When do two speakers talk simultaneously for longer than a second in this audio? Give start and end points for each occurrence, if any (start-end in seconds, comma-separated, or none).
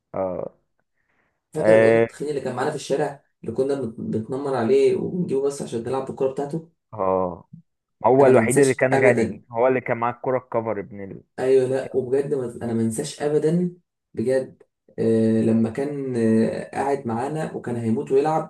8.2-9.4